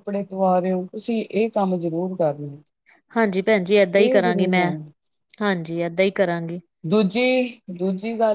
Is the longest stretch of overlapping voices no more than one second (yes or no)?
yes